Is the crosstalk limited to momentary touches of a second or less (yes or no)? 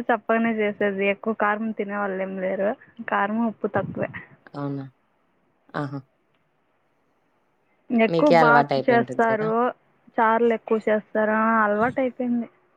no